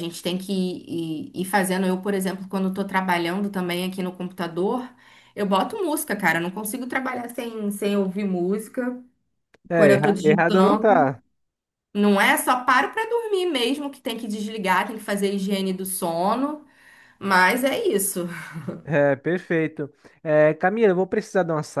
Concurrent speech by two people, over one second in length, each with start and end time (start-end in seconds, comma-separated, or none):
9.7-10.9